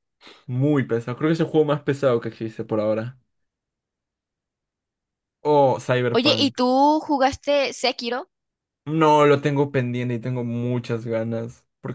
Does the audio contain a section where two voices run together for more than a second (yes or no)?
no